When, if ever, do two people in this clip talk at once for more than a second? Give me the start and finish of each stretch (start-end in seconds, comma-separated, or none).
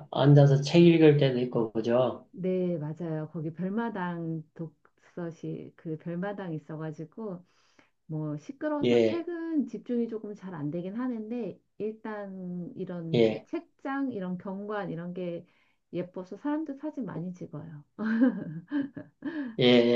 none